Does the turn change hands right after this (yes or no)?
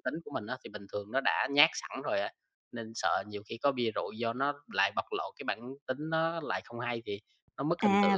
yes